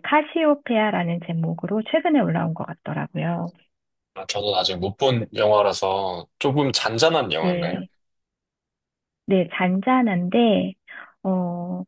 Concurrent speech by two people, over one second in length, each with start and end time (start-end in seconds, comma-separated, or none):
none